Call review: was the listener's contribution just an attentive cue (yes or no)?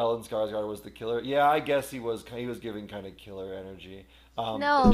no